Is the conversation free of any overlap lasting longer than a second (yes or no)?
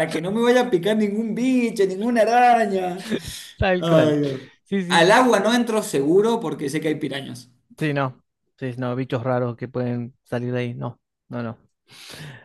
yes